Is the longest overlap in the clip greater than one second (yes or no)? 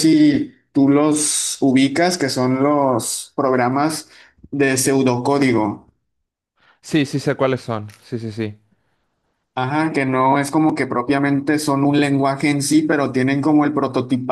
no